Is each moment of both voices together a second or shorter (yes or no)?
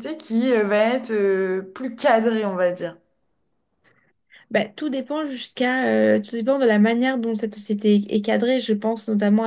yes